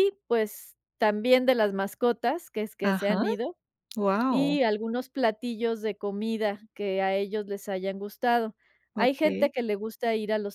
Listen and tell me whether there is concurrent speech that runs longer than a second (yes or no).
no